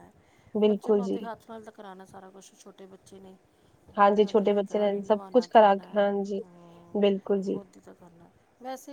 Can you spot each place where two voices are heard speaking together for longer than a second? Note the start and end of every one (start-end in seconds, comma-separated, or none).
4.1-5.9